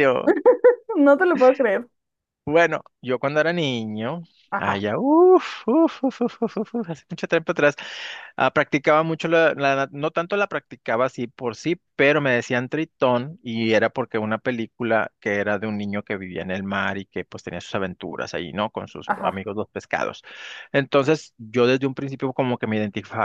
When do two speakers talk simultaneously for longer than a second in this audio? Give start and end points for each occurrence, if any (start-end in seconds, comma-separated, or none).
none